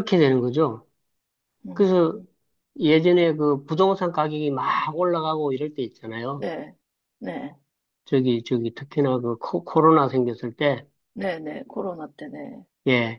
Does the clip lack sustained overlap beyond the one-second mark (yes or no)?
yes